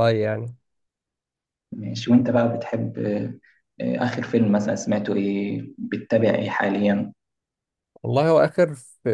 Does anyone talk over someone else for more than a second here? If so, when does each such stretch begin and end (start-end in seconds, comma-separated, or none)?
none